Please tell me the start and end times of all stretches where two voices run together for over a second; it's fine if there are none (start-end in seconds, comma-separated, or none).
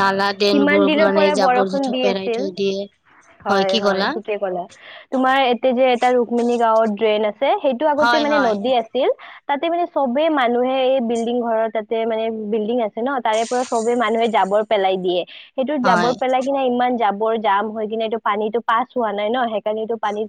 0.5-2.5